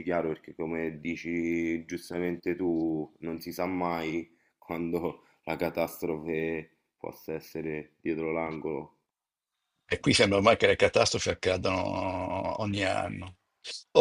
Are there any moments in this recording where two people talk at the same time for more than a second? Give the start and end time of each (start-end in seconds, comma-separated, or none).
none